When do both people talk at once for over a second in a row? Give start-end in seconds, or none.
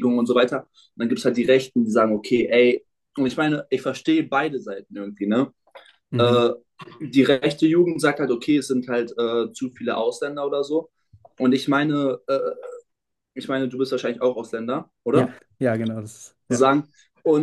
none